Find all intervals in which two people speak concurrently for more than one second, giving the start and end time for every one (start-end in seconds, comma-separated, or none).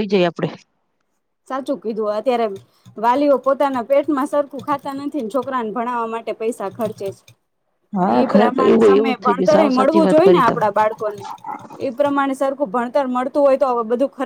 8.2-10.6